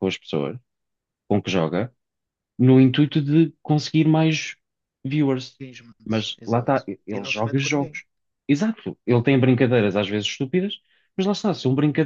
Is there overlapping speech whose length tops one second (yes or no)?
yes